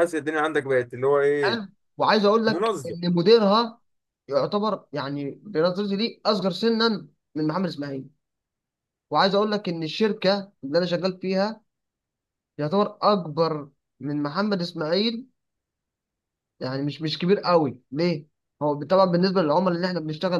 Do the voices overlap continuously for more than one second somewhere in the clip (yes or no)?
no